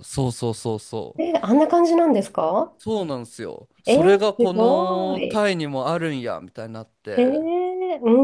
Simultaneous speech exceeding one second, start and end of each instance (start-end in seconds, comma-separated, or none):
3.9-5.4